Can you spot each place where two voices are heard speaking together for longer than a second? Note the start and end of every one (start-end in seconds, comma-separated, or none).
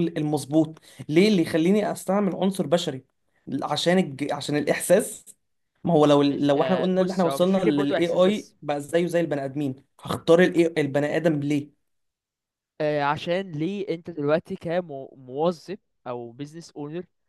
6.3-8.6